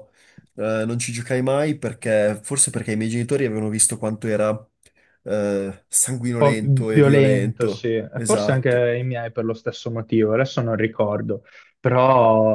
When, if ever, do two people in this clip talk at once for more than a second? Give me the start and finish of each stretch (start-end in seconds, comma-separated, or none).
6.4-8.9